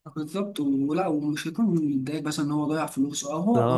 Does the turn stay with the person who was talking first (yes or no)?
yes